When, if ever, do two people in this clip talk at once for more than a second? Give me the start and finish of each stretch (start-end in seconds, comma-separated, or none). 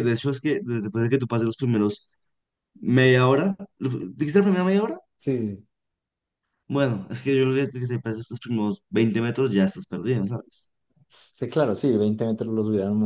none